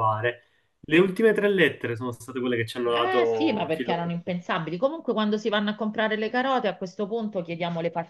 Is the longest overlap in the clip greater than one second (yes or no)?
yes